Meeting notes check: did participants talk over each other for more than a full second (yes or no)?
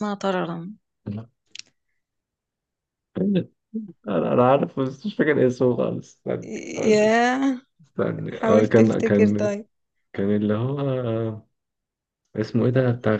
yes